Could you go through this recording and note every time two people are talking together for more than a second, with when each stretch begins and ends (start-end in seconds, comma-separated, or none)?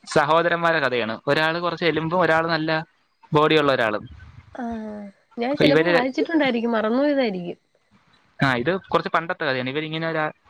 none